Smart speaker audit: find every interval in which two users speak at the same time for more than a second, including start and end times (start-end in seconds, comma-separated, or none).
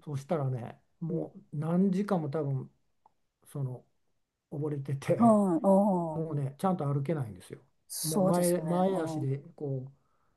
8.0-9.3